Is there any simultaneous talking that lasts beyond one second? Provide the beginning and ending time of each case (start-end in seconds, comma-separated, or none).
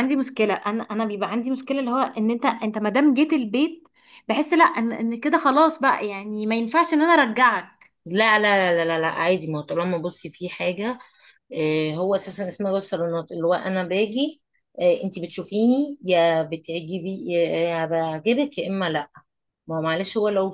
none